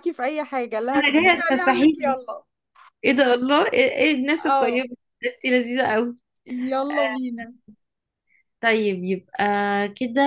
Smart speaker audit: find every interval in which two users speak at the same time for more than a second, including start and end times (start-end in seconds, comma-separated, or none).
0.9-2.2